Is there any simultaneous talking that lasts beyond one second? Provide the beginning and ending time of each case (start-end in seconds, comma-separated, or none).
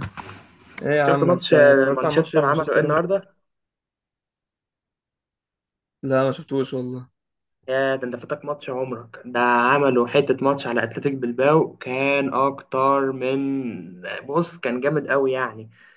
1.1-3.1